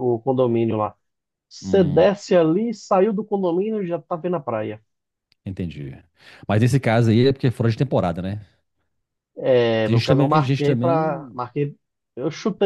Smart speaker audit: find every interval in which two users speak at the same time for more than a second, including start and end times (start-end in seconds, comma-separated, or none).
9.8-11.4